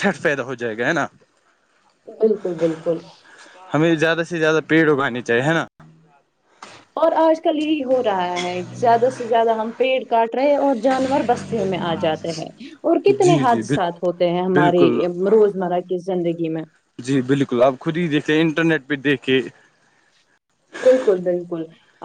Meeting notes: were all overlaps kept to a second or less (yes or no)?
yes